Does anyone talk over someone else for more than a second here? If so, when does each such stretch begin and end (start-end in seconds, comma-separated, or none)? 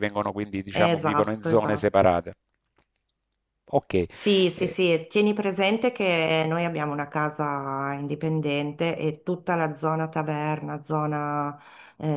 0.7-2.0